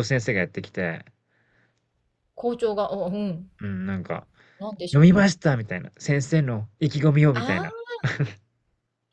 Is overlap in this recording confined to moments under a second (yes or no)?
yes